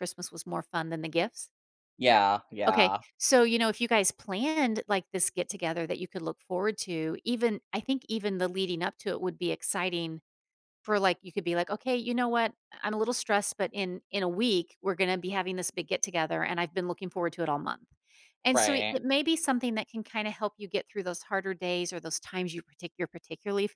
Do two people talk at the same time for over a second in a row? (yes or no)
no